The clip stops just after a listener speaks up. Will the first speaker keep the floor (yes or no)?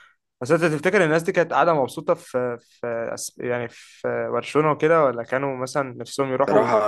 no